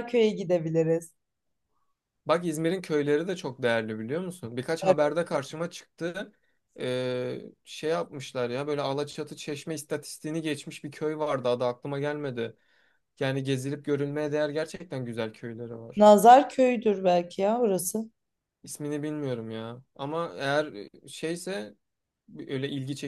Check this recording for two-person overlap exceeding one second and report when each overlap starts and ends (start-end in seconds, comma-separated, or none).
none